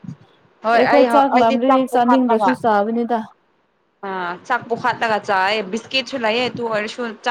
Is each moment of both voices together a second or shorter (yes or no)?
no